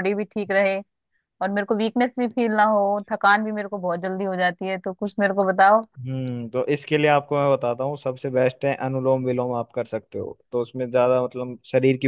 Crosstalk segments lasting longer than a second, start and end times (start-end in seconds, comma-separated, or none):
none